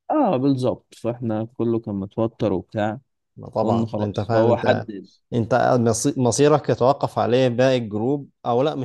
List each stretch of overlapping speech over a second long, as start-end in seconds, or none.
3.6-4.9